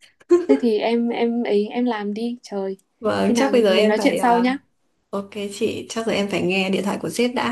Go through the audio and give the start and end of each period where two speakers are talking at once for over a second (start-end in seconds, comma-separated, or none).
3.3-4.5